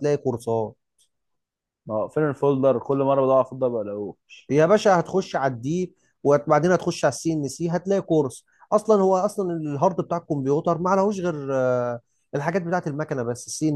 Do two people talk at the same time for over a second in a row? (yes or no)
no